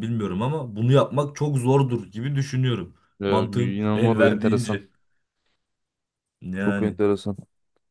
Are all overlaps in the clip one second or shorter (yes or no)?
no